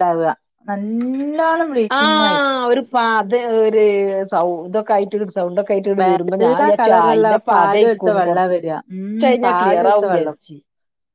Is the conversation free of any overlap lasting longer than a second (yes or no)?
no